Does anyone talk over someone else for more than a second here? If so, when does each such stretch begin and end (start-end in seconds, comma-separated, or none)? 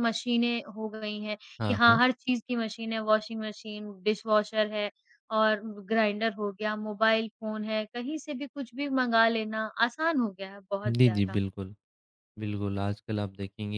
none